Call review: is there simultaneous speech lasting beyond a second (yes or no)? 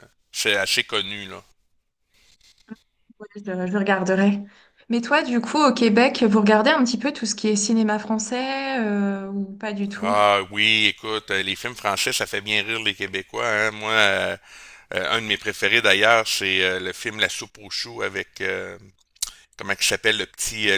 no